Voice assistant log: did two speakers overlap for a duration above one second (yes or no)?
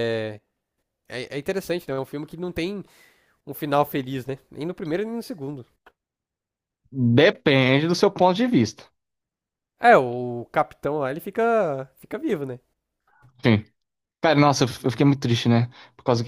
no